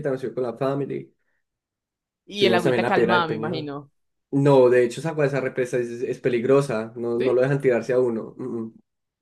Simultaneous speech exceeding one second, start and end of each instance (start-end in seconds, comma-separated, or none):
2.4-3.7